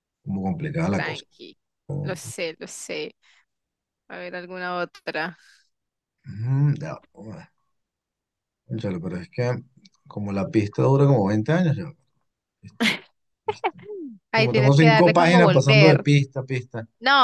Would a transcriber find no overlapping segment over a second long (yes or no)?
no